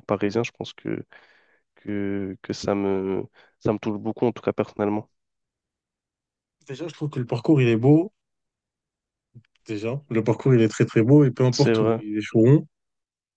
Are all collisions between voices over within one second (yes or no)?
yes